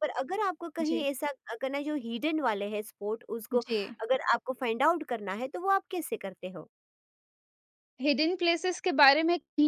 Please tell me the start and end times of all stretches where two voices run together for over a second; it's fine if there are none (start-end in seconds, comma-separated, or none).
none